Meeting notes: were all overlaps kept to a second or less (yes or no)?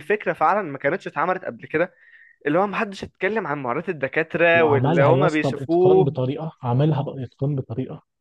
no